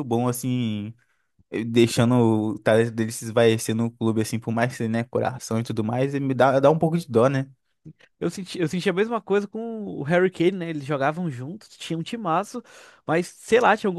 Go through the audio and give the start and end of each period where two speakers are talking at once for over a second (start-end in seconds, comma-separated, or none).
none